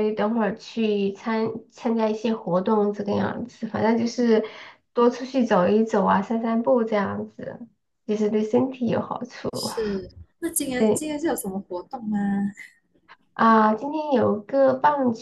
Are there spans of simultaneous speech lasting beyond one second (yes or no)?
no